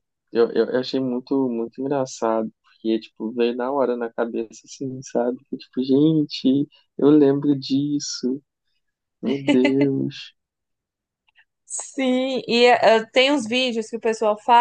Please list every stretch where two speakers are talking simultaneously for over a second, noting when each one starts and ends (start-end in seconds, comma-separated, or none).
none